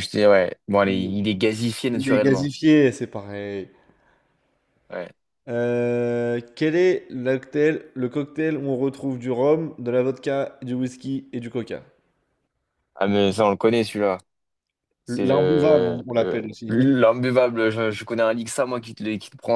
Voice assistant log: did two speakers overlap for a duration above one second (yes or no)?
yes